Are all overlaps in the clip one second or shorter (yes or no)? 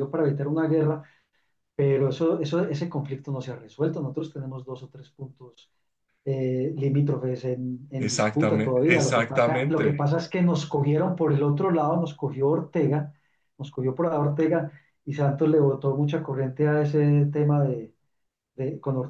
no